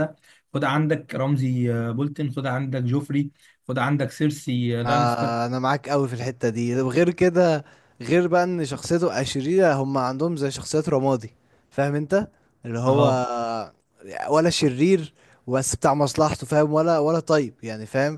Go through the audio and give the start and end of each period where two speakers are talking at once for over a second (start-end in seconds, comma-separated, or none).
none